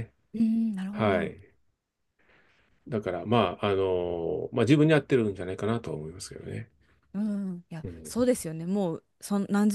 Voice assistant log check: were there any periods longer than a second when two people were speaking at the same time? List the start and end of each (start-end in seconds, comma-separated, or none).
none